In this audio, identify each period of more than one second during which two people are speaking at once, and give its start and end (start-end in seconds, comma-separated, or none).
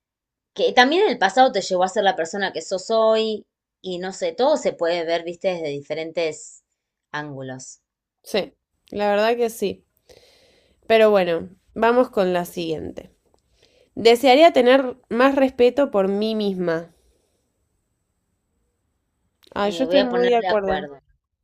19.6-20.9